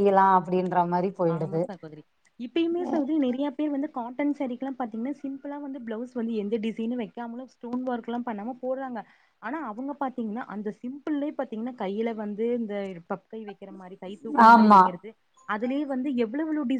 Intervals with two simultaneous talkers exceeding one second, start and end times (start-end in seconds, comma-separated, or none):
none